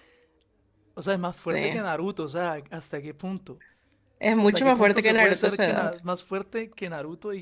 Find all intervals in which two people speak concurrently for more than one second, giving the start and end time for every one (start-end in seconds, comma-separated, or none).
4.4-5.9